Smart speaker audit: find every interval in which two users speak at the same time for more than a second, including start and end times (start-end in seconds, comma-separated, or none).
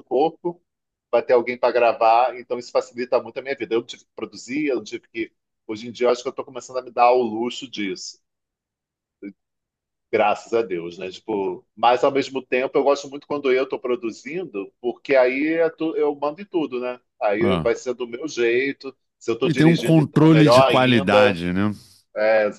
19.4-21.4